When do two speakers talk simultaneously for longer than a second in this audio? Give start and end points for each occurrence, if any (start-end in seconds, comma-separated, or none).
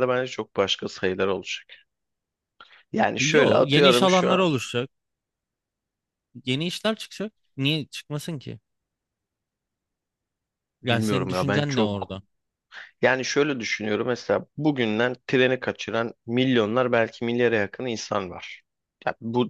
3.2-4.5, 10.8-12.1